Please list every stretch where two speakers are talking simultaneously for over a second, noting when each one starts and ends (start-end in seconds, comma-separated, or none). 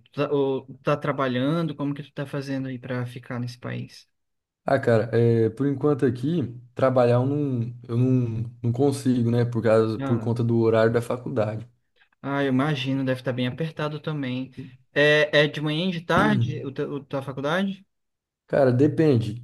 none